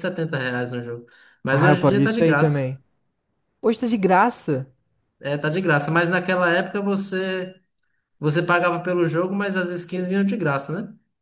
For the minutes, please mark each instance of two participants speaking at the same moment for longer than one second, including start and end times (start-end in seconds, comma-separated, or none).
1.5-2.7